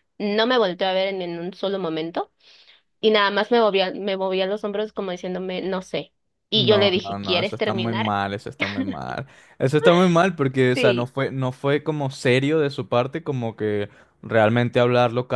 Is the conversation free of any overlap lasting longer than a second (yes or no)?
no